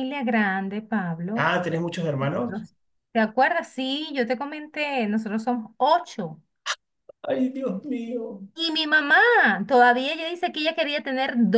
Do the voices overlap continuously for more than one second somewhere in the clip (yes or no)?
no